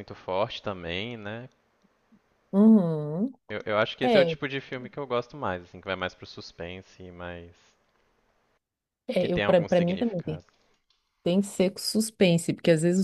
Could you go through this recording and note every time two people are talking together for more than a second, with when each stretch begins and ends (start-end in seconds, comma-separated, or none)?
9.2-10.4